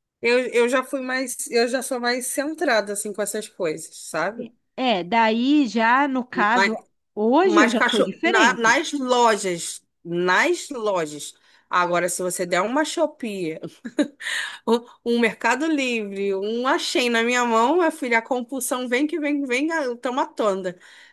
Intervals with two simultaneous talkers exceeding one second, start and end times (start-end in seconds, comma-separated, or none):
7.4-8.8